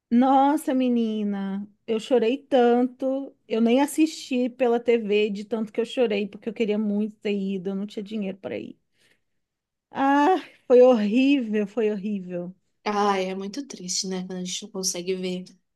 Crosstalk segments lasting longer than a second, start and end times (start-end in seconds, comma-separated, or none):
none